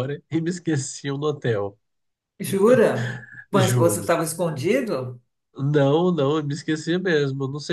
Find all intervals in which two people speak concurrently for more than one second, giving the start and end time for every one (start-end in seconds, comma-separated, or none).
none